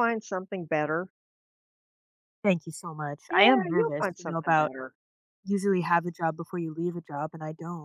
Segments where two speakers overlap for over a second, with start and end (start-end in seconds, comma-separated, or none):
3.3-4.7